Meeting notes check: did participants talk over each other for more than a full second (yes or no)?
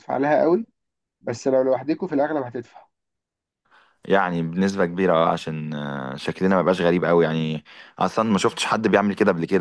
no